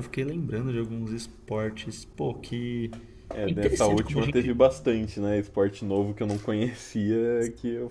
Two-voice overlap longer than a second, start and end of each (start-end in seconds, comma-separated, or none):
3.5-4.7